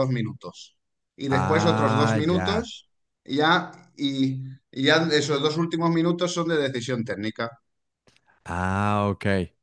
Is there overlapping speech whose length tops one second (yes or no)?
yes